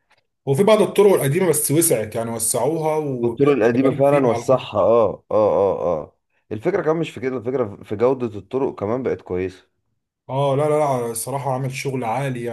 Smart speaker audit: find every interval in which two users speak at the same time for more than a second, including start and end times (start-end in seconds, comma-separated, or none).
3.2-4.7